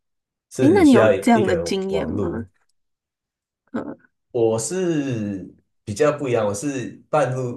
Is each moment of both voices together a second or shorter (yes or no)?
no